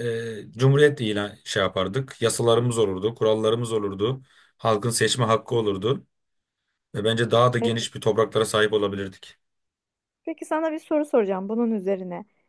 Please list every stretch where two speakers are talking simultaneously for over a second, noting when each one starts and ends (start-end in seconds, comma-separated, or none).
none